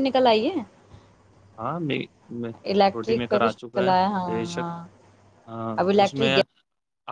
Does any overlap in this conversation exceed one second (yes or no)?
yes